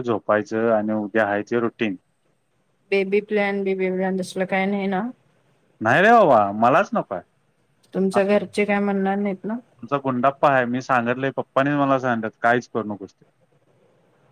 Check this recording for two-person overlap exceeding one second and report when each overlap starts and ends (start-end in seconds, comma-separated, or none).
none